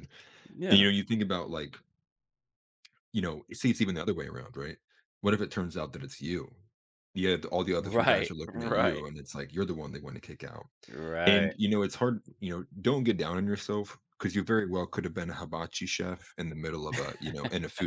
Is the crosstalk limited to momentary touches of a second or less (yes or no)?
no